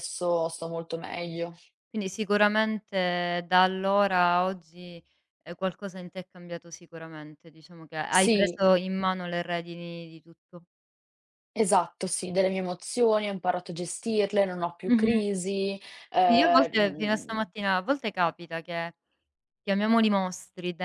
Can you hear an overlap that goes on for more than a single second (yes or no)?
yes